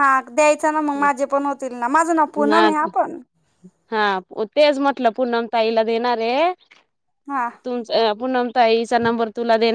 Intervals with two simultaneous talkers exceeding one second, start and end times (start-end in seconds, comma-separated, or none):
none